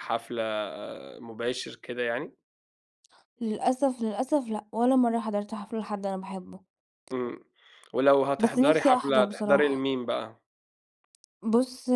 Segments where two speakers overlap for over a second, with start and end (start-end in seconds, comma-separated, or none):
8.4-9.9